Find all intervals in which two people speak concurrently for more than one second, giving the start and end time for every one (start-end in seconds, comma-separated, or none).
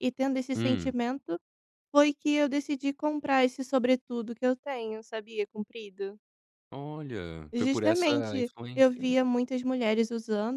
7.5-9.0